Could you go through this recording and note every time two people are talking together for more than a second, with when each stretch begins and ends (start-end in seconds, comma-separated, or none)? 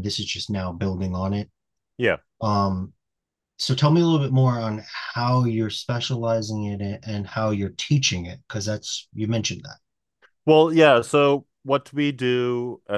none